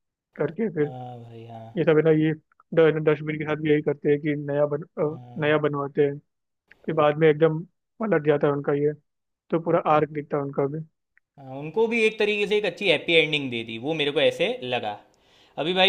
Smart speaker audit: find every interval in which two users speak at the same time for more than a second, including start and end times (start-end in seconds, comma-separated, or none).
none